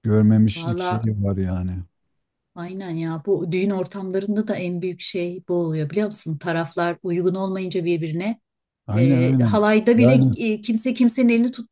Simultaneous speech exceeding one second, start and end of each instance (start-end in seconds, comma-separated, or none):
8.9-10.3